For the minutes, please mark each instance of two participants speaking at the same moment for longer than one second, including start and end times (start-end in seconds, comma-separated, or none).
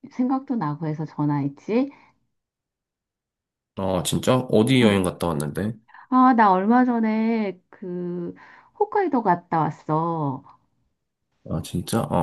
none